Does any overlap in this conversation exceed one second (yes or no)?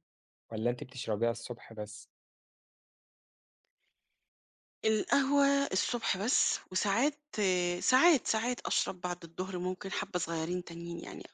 no